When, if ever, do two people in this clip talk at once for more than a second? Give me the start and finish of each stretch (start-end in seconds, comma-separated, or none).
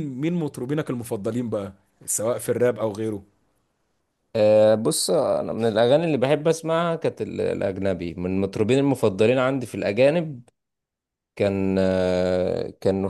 none